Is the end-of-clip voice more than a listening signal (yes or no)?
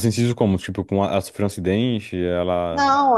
yes